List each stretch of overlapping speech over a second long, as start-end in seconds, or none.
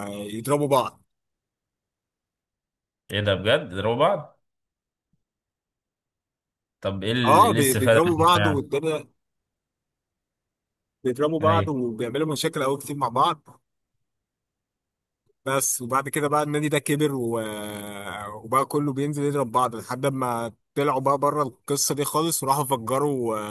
7.2-8.7